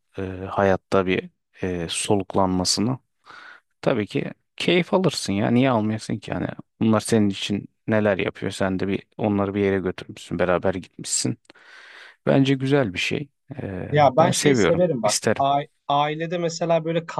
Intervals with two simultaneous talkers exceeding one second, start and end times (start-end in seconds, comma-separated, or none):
13.9-15.4